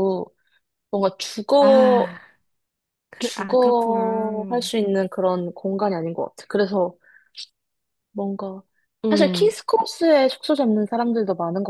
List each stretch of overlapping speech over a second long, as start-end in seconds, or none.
3.2-4.7